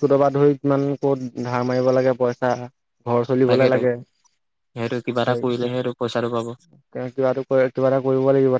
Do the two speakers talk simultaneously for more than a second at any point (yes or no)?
yes